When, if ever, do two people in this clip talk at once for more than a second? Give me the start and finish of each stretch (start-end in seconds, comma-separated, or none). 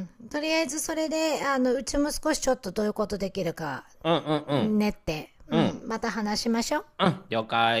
none